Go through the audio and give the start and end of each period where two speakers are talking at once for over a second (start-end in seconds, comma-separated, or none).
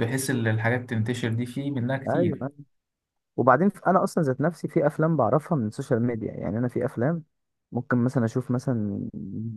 none